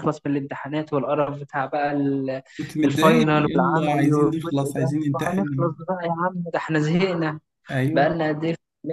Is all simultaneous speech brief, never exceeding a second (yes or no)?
no